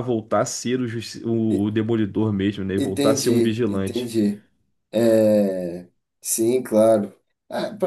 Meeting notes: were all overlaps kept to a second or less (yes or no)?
no